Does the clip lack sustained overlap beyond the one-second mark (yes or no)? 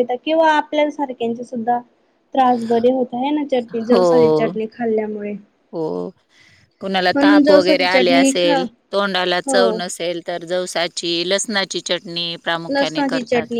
no